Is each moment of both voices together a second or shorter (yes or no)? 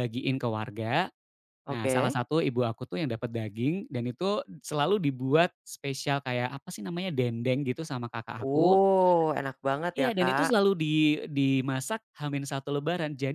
yes